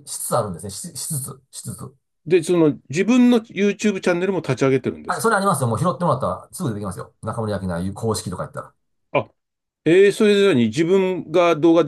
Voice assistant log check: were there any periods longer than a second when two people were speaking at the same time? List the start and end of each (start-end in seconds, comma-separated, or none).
none